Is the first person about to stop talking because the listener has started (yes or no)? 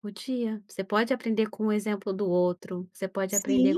no